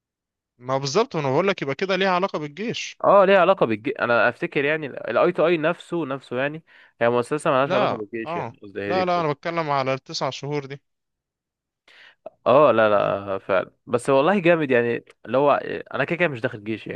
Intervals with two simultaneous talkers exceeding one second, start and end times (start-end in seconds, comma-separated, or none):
7.7-9.5